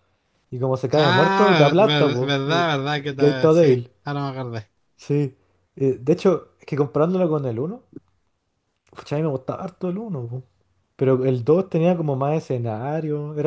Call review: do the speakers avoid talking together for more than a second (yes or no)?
no